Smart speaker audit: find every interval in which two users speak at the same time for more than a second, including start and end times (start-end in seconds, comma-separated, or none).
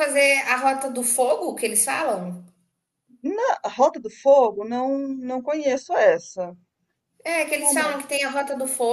none